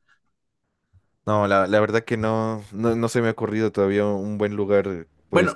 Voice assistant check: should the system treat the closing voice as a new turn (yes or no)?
yes